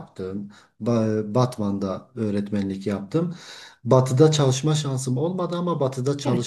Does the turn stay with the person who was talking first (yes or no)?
yes